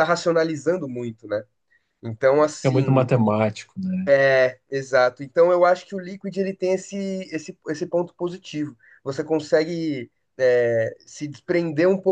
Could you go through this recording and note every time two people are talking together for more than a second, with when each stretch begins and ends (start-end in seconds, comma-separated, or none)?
none